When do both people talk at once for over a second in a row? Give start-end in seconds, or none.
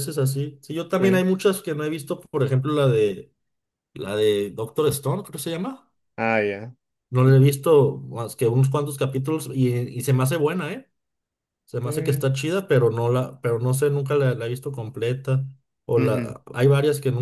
none